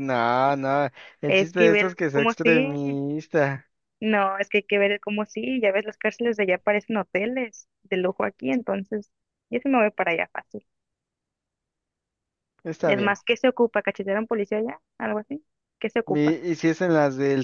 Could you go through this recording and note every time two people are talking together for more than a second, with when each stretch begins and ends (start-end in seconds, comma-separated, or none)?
1.3-3.0